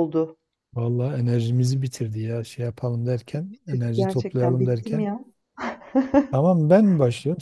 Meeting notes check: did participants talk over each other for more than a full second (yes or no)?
yes